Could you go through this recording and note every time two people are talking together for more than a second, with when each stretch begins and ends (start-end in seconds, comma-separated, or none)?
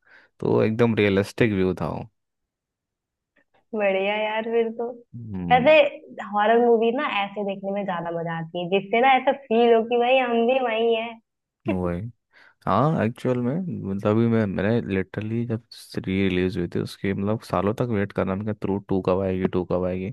none